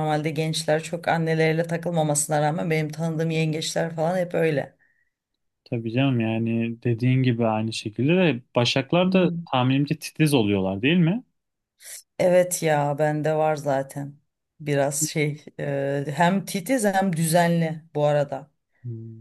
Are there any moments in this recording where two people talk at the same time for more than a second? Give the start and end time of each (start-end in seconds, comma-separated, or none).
none